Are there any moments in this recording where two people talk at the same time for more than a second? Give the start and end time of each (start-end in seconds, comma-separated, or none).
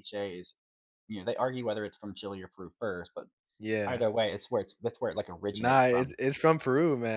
none